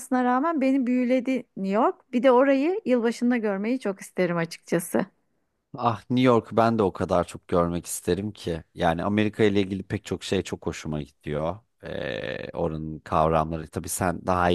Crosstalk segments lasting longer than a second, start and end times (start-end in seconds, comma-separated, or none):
none